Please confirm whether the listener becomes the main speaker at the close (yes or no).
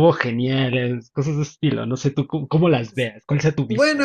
yes